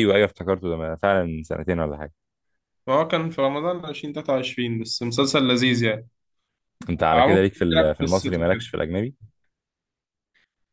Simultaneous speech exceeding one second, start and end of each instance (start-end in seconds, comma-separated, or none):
7.0-8.7